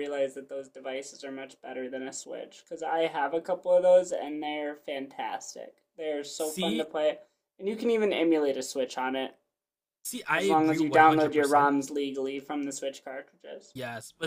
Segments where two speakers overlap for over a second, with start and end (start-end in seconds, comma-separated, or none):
10.3-11.7